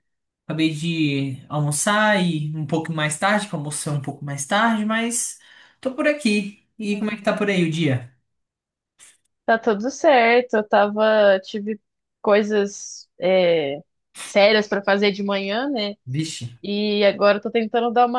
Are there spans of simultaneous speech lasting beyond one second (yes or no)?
no